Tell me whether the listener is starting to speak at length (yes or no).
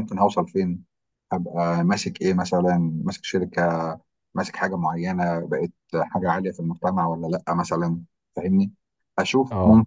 no